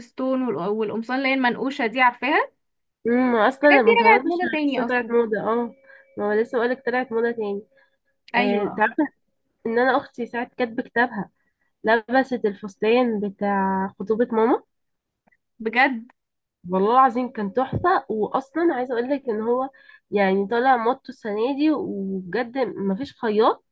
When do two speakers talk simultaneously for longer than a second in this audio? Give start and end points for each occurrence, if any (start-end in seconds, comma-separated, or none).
3.6-5.1